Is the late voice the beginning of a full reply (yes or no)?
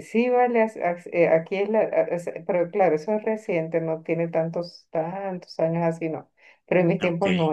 no